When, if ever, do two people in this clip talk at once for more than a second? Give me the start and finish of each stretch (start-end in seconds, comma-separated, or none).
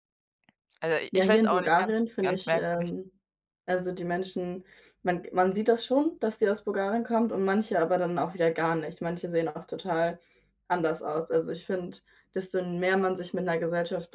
1.1-2.9